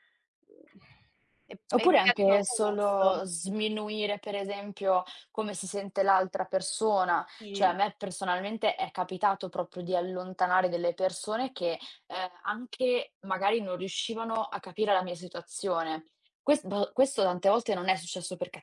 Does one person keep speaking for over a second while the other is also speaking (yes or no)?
yes